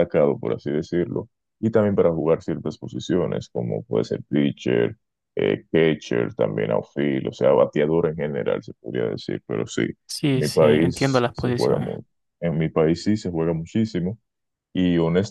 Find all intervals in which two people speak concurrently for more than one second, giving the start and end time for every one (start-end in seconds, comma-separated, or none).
10.4-11.9